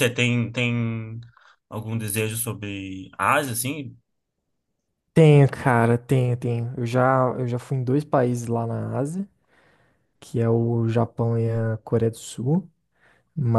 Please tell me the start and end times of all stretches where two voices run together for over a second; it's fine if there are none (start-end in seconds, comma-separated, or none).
none